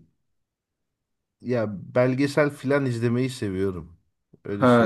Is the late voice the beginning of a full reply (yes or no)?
yes